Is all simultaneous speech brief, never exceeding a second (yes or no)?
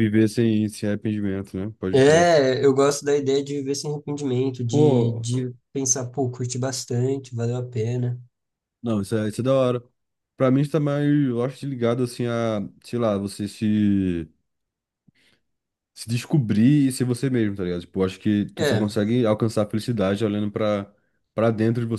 yes